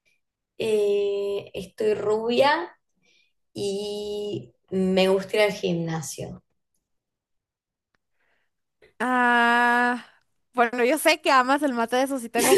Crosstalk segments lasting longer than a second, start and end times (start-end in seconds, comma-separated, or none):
none